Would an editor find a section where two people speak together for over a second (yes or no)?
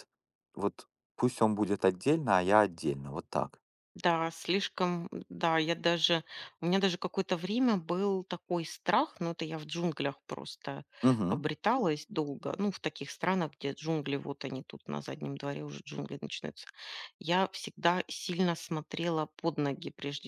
no